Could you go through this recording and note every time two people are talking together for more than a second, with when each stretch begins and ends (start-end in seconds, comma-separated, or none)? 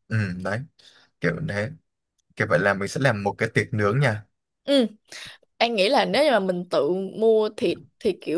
none